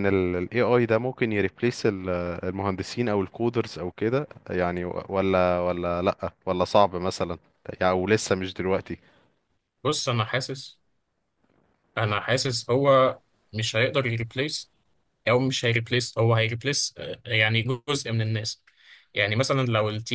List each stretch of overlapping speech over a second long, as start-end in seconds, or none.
none